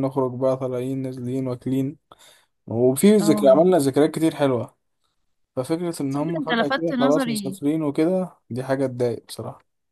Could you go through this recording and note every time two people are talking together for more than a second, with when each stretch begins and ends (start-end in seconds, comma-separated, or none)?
6.1-7.6